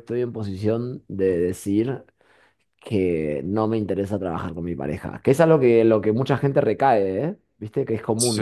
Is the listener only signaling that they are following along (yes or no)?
no